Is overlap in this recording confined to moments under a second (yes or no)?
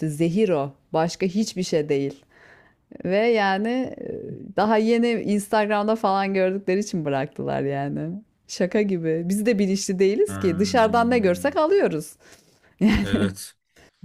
no